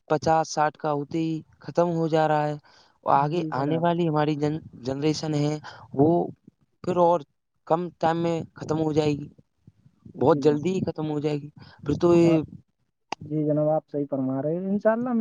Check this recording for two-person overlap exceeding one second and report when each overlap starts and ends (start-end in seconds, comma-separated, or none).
none